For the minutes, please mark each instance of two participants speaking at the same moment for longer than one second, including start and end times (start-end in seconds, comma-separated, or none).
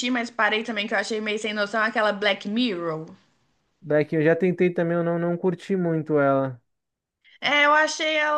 none